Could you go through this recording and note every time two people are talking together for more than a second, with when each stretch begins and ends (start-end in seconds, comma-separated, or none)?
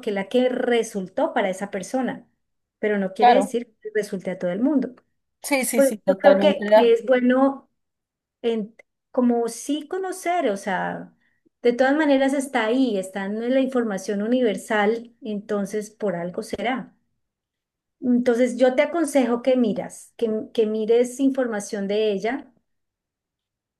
5.4-7.0